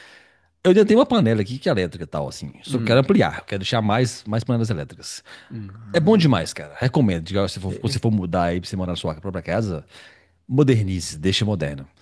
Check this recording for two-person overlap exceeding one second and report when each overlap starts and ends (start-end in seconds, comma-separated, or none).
none